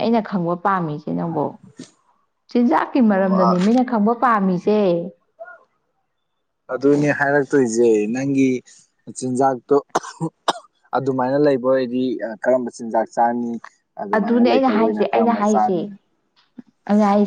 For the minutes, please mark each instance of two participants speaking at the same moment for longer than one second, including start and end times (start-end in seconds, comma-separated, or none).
14.2-15.8